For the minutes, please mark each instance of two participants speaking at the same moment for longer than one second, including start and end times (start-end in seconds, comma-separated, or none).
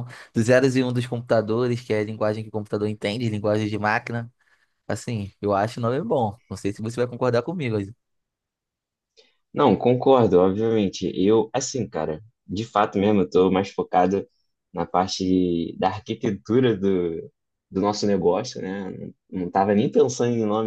none